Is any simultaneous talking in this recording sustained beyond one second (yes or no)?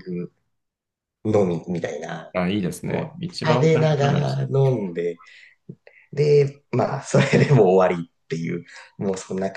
yes